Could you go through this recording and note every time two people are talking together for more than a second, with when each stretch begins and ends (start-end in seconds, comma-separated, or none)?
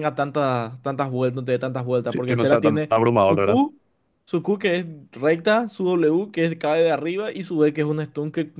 2.0-3.6